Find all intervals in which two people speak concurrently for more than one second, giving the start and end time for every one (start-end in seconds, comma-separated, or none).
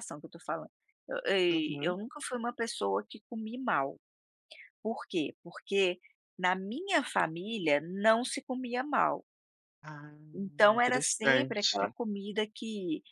10.7-11.9